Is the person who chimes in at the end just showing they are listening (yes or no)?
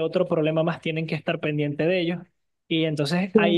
yes